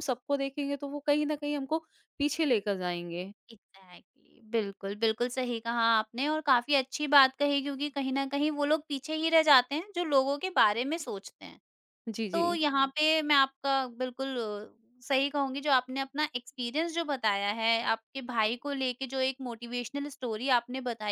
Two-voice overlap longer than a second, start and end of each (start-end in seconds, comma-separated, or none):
none